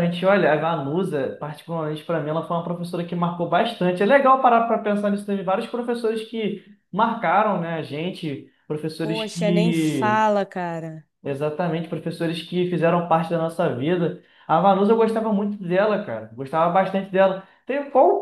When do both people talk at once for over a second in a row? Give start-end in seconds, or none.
9.0-10.2